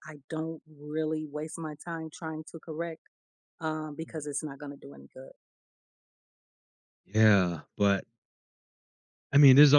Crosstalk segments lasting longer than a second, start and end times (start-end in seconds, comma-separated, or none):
none